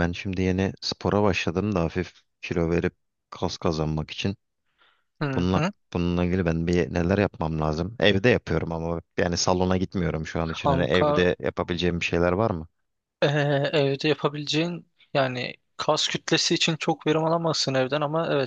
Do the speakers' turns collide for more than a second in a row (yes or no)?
no